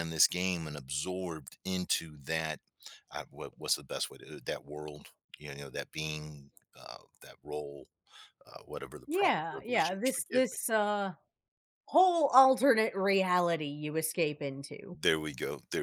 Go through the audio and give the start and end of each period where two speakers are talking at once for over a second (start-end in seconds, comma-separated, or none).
9.1-10.6